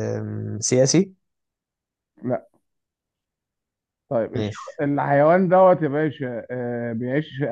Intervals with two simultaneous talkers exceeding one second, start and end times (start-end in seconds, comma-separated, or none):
none